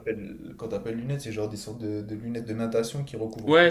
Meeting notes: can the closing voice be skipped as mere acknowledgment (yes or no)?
no